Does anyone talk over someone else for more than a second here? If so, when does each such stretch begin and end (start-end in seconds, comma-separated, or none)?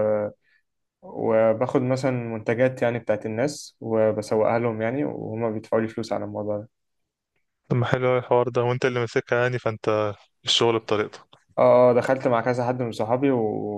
none